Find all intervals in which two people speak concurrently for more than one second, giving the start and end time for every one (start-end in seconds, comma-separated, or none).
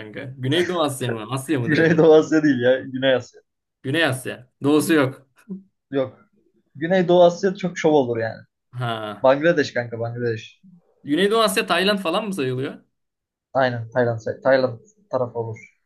none